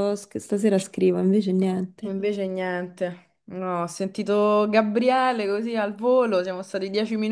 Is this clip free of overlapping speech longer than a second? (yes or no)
yes